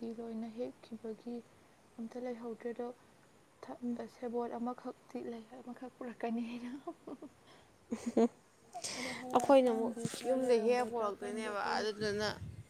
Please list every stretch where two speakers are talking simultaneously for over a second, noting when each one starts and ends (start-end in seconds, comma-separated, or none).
9.5-11.9